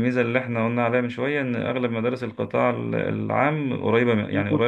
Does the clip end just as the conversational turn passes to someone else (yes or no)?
no